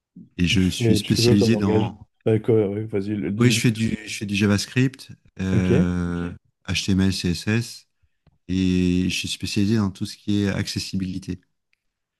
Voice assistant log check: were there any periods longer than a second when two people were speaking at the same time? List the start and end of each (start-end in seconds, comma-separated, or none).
0.5-2.1